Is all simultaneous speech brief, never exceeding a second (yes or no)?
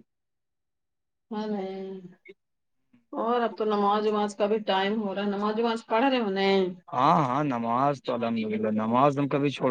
yes